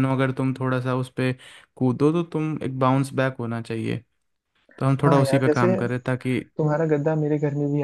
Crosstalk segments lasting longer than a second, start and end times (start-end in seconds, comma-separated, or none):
none